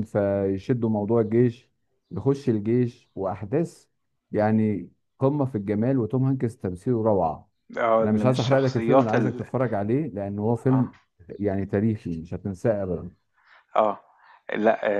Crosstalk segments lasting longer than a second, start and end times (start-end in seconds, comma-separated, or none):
8.0-9.4